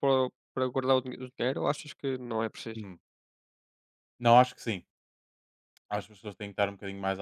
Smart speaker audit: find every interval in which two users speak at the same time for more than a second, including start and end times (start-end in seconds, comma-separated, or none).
none